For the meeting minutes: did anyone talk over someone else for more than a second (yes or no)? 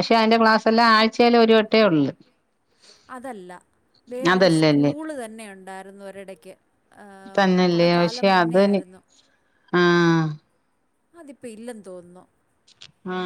yes